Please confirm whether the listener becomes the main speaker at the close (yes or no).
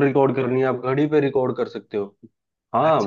yes